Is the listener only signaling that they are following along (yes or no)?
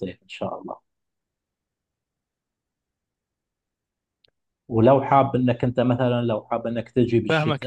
no